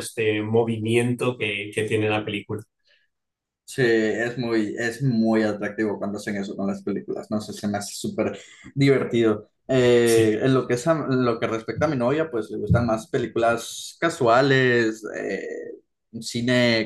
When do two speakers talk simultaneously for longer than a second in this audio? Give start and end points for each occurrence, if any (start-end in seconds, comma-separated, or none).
none